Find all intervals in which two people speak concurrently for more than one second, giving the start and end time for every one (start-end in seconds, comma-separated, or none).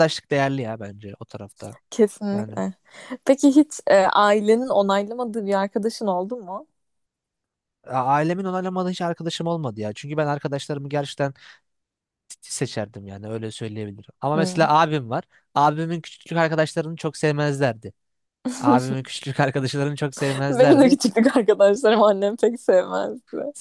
none